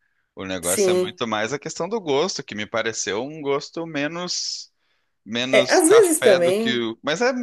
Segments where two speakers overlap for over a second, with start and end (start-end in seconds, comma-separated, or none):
5.5-6.8